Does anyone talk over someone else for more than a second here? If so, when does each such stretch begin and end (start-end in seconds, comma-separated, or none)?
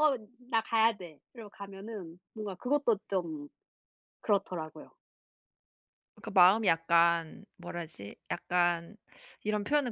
none